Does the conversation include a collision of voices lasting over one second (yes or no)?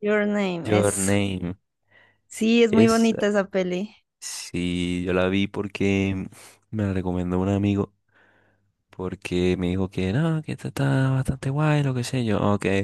no